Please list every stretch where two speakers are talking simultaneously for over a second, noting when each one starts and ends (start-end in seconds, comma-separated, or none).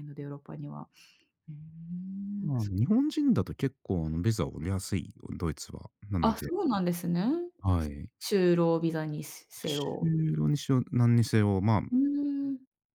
none